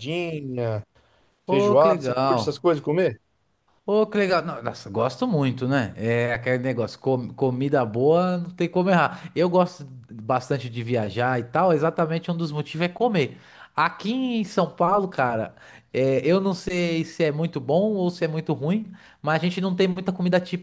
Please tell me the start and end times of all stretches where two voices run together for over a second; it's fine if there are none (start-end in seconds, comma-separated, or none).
1.4-2.7